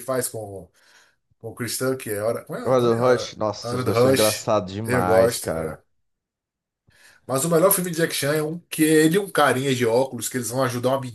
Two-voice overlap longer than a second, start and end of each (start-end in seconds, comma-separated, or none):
2.6-5.8